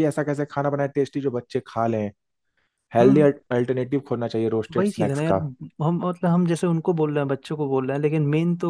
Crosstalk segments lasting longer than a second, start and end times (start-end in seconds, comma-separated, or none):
none